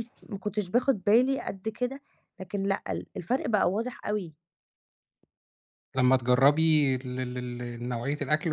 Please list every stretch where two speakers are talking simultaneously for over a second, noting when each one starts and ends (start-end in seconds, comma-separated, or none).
none